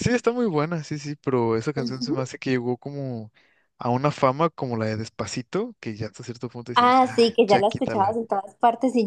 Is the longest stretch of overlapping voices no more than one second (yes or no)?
no